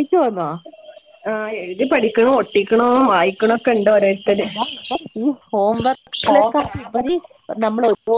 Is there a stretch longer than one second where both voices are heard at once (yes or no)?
no